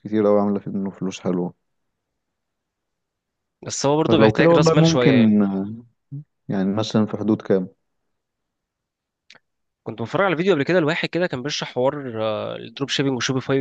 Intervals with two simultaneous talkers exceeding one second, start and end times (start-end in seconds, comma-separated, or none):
4.1-5.4